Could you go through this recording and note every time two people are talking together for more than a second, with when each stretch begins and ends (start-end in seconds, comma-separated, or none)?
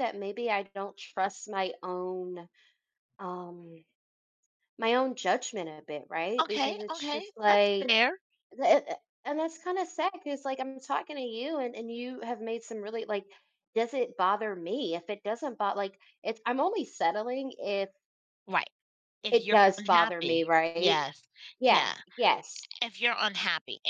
6.4-8.0, 19.3-21.0